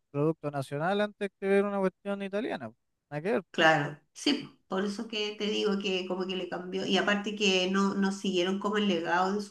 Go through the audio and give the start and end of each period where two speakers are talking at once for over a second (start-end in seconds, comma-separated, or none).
none